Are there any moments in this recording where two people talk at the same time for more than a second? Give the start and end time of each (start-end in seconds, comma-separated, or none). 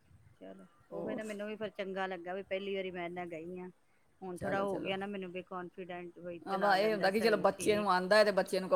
6.5-7.9